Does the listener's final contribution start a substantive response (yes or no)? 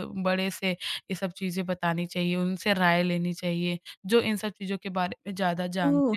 yes